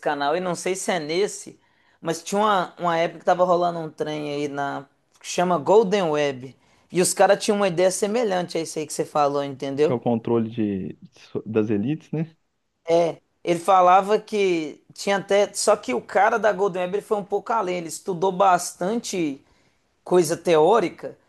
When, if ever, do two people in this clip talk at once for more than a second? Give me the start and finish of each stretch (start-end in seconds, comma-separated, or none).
none